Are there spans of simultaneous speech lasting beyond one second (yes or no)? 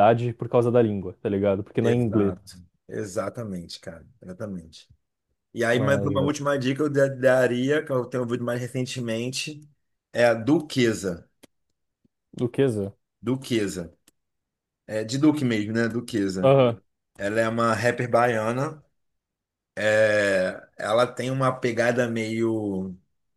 no